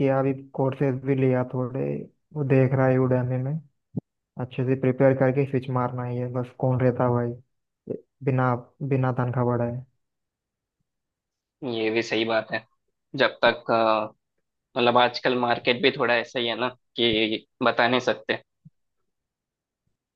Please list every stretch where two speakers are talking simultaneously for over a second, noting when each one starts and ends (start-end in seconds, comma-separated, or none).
none